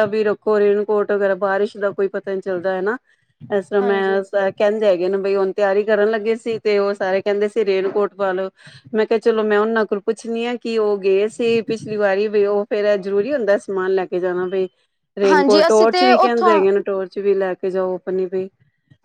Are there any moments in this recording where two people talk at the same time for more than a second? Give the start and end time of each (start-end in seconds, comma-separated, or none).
15.3-16.5